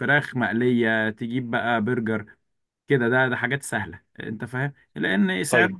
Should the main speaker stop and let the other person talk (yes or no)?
no